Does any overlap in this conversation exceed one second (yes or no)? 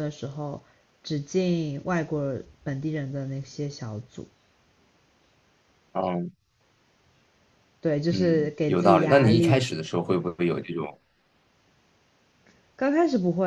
yes